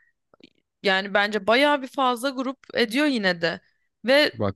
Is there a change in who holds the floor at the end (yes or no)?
no